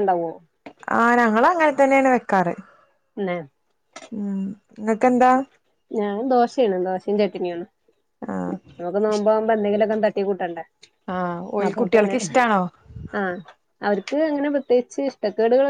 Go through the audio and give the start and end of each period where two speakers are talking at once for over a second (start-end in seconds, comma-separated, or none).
none